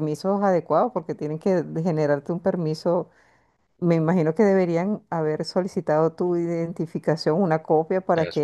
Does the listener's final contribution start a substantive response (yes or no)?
no